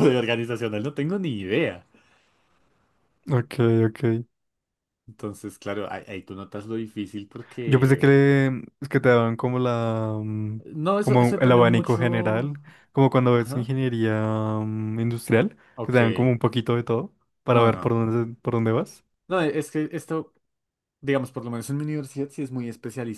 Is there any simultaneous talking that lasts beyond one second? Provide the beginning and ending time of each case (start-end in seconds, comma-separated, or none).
11.0-12.5